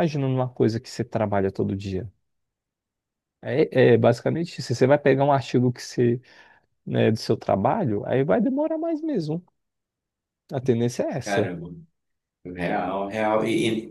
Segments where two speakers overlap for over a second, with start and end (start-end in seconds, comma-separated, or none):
none